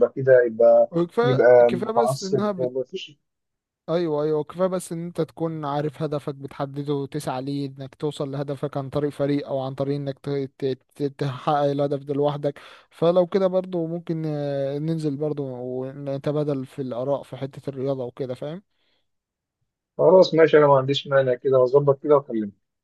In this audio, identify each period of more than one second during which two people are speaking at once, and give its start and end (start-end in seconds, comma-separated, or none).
0.9-2.7